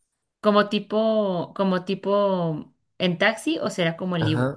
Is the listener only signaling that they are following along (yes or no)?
no